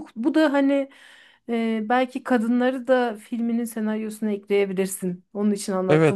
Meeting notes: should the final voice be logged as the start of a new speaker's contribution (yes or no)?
yes